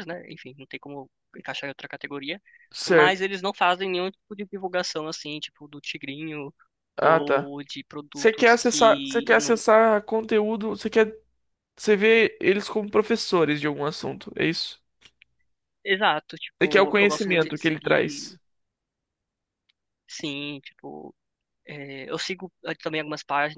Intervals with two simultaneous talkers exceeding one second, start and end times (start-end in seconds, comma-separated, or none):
8.1-9.5, 16.6-18.4